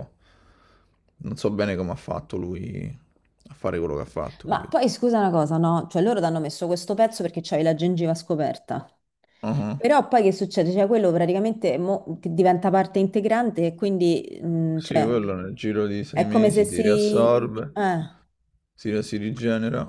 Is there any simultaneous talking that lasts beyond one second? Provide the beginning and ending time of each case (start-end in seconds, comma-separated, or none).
16.1-17.8